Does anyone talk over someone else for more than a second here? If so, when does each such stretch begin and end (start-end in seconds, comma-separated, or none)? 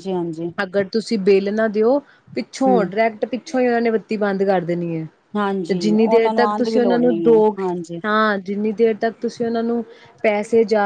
5.7-7.6